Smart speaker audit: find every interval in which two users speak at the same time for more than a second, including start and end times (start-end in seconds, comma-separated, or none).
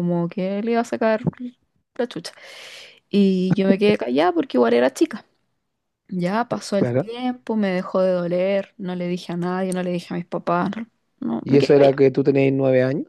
none